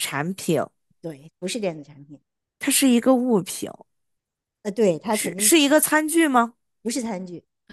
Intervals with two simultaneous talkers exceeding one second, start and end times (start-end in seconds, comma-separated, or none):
none